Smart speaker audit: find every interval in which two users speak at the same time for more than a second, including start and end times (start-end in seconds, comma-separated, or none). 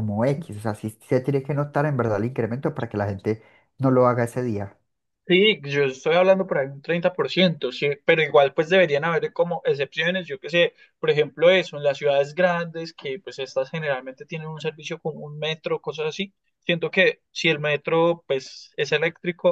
none